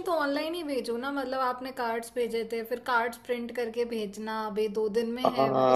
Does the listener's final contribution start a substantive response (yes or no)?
yes